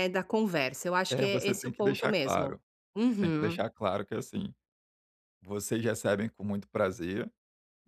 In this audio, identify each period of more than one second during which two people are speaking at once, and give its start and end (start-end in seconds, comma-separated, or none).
1.1-2.6